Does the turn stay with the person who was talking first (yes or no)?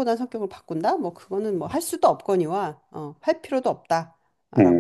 no